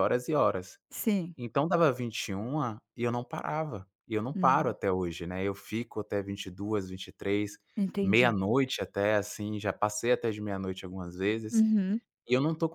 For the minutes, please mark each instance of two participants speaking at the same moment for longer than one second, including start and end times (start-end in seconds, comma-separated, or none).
none